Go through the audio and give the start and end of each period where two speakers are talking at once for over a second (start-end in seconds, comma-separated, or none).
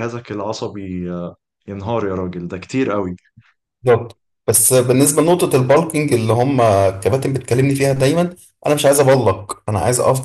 none